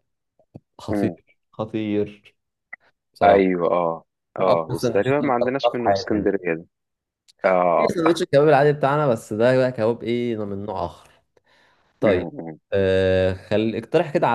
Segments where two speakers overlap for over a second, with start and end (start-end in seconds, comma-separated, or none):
4.4-6.3